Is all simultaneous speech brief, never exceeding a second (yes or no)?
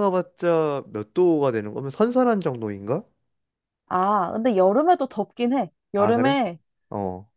yes